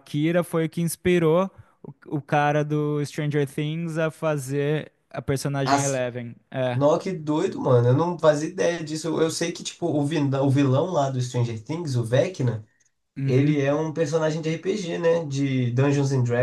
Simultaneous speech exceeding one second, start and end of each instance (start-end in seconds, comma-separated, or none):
none